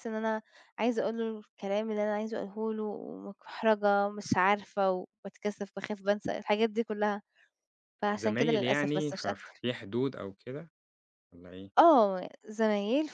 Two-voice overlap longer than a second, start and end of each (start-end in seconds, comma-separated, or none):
8.1-9.6